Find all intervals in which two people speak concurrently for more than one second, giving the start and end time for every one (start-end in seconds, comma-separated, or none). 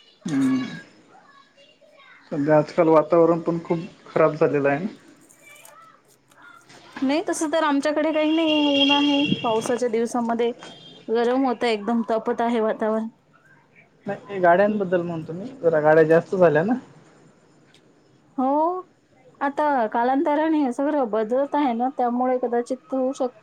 none